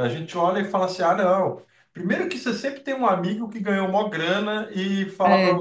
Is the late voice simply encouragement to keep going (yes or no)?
yes